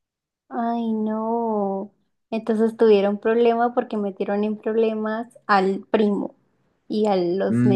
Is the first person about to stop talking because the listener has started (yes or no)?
yes